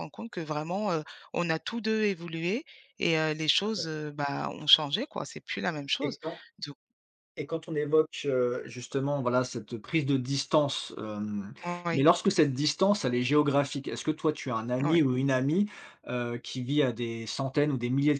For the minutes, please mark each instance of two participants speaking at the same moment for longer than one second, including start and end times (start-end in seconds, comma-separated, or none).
none